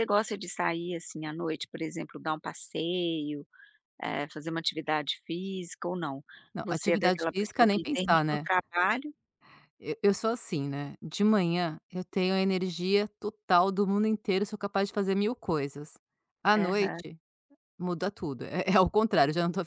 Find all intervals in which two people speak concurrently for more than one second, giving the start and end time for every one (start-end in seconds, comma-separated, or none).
6.6-8.5